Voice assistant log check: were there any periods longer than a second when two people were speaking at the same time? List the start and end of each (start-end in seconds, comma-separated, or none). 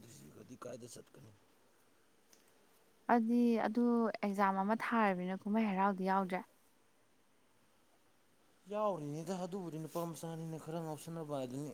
none